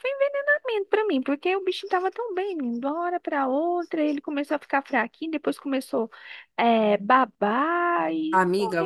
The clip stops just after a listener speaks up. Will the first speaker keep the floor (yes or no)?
no